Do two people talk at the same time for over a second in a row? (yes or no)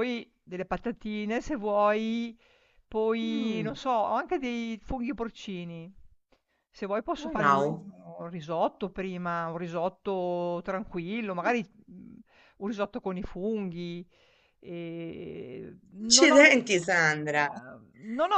yes